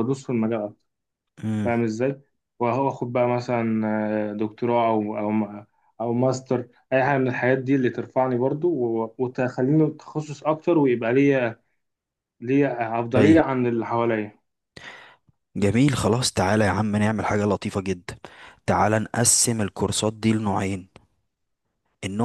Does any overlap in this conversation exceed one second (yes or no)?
no